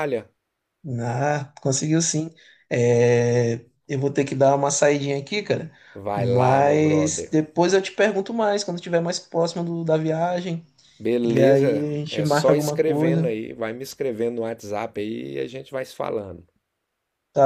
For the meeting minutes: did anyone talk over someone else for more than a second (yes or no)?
yes